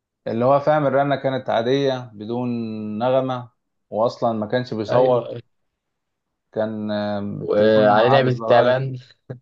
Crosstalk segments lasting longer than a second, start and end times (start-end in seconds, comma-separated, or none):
7.4-8.8